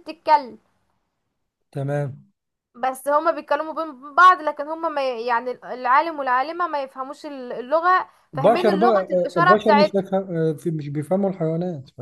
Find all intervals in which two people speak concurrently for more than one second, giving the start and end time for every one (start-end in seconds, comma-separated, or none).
8.3-10.0